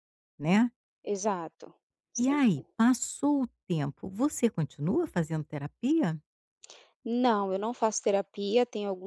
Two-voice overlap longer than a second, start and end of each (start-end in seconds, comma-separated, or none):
none